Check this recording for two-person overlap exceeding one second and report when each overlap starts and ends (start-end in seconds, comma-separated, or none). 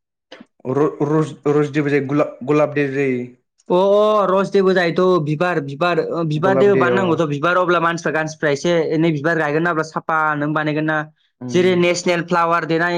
none